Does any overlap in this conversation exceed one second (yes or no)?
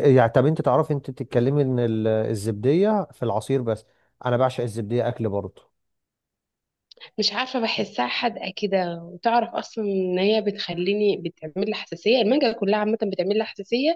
no